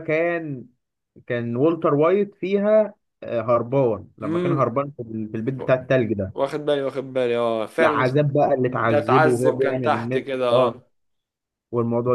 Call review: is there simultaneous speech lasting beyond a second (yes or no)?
yes